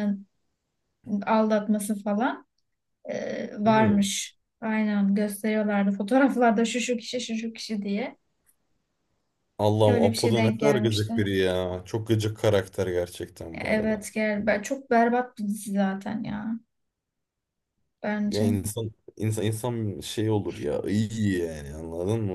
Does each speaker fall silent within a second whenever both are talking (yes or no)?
no